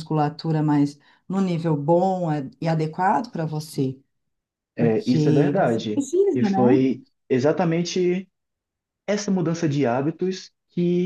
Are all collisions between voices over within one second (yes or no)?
no